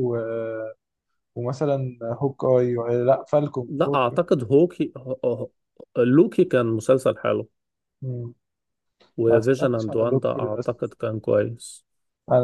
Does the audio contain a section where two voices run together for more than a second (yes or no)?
yes